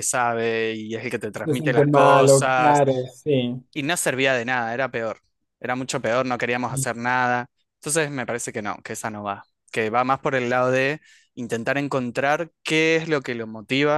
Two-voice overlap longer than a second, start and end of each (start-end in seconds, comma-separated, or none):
1.4-2.8